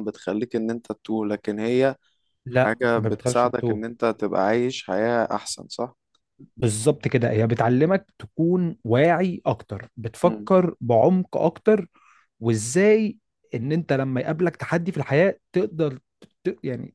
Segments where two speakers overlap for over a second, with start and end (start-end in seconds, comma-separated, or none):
2.5-3.9